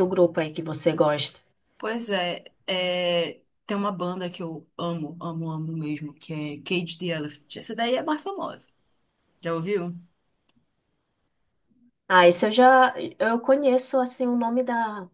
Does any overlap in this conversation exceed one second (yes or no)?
no